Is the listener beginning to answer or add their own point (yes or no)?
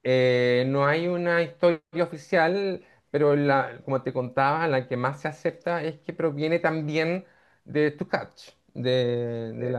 no